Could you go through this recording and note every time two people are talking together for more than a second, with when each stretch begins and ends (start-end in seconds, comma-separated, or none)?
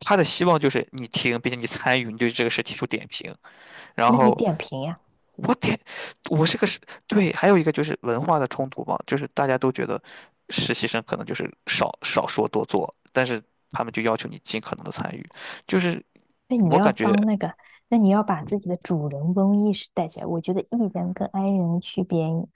none